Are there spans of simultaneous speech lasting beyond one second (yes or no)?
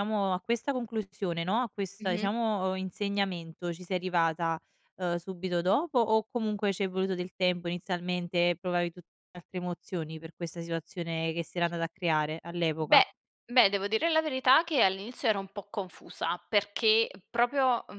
no